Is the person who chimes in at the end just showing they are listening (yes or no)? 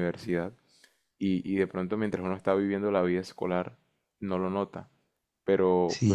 no